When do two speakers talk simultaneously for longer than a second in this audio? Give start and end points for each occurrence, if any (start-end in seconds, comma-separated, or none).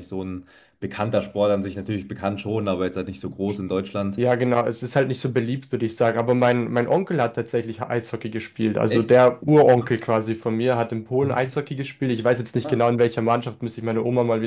none